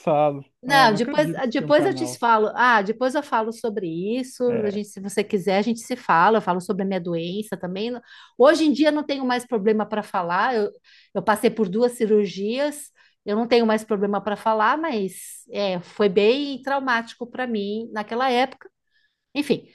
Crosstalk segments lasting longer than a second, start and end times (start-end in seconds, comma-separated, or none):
0.7-2.2